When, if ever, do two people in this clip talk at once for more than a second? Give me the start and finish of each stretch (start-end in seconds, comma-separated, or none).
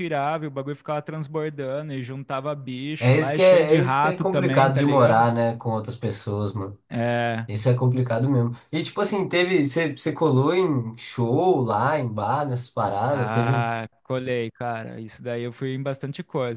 3.0-5.3